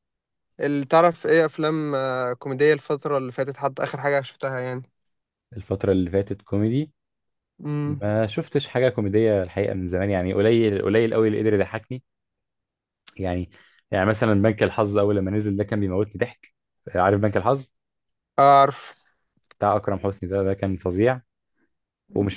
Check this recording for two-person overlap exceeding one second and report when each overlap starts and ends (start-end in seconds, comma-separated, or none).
none